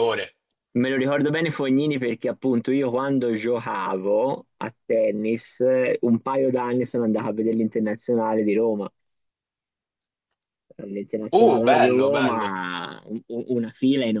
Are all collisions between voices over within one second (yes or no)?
no